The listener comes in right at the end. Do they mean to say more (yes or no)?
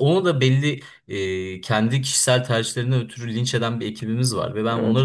no